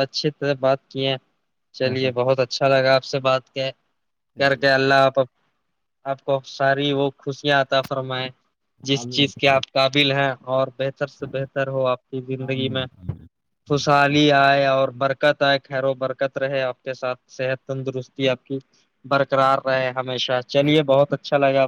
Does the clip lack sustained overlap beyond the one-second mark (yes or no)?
yes